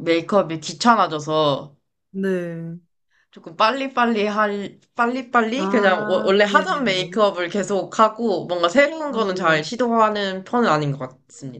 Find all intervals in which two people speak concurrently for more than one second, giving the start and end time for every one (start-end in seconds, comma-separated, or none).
5.6-7.2